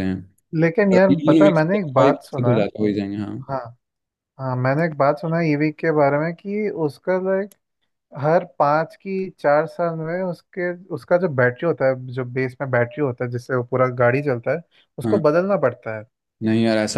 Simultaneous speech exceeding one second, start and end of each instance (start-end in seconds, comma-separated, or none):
0.9-2.6